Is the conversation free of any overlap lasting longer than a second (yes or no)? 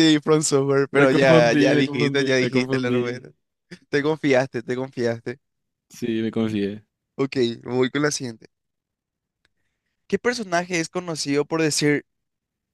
no